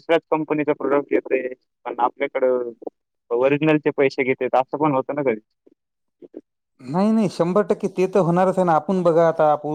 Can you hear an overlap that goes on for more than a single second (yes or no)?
no